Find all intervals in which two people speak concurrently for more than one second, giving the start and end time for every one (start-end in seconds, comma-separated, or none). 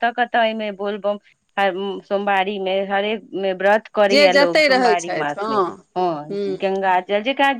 4.1-5.5